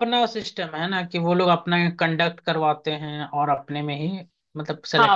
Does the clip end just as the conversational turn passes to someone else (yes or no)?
yes